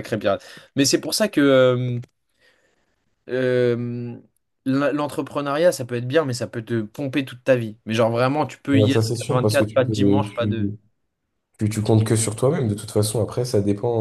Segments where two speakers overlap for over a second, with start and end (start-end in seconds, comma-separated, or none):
8.7-10.7